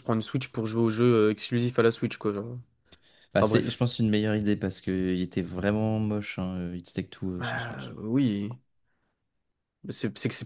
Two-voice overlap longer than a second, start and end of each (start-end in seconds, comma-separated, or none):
none